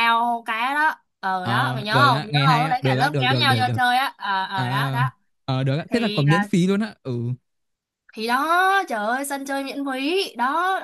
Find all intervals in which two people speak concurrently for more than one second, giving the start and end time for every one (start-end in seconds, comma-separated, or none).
1.4-3.8